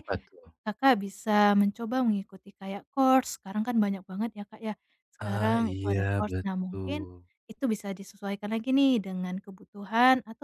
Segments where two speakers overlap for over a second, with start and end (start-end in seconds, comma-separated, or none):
5.2-7.1